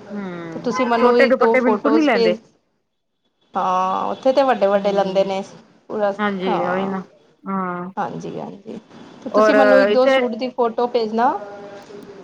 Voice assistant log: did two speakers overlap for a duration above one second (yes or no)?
yes